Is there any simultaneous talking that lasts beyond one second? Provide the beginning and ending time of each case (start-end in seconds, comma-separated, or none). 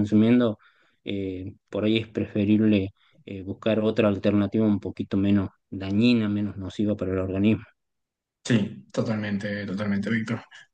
none